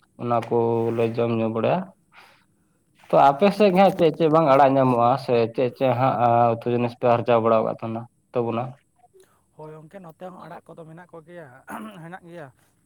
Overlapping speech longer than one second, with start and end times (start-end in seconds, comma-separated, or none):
none